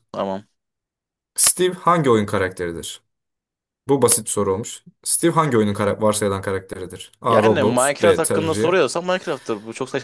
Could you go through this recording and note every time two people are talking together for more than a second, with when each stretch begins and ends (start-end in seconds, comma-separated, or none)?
7.3-8.7